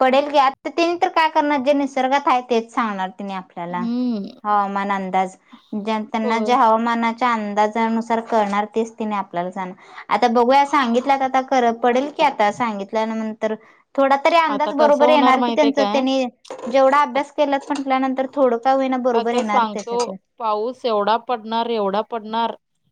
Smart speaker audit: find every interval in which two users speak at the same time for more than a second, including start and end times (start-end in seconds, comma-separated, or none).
14.6-16.0